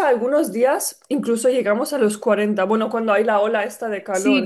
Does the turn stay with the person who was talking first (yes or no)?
no